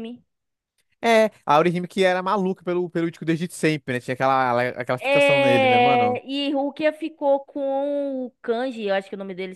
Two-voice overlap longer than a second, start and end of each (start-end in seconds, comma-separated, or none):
5.0-6.2